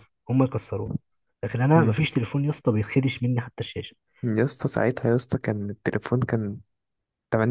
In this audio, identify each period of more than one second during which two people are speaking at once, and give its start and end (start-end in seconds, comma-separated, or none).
none